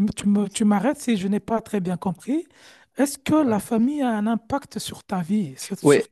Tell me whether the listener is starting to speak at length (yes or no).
yes